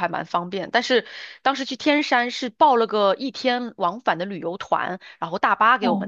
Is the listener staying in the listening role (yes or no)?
no